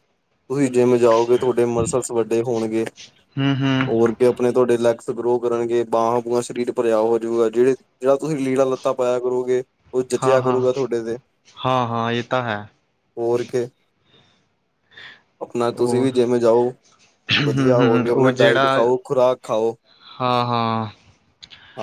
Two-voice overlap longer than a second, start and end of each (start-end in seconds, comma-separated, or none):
17.4-18.8